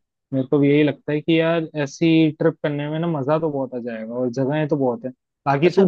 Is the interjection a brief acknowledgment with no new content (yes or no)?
yes